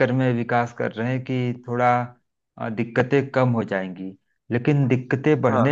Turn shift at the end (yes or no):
no